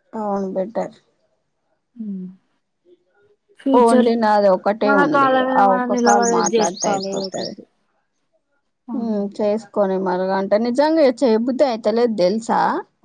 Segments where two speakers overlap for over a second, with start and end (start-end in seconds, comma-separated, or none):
5.1-7.5